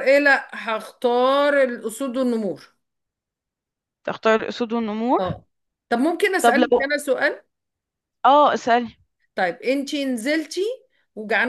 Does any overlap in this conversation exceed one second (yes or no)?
no